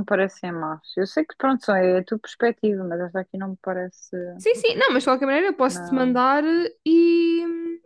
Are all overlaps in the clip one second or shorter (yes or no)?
yes